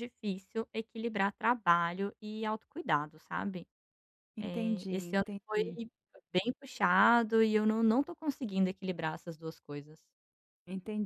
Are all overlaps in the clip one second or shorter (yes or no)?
no